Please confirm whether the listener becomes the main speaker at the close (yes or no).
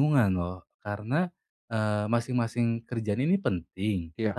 no